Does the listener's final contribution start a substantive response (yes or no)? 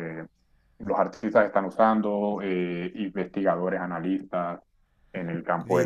yes